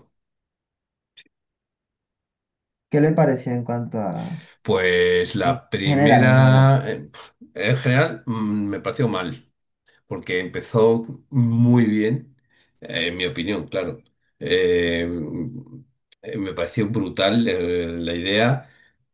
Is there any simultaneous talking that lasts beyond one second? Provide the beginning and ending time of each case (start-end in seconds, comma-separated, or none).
5.4-6.7